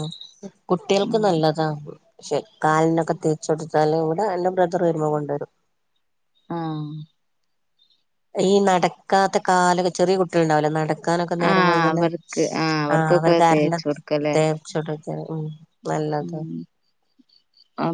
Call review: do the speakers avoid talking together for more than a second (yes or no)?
no